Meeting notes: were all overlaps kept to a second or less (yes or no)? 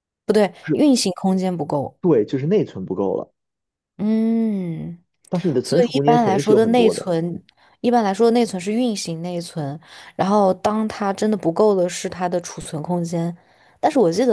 no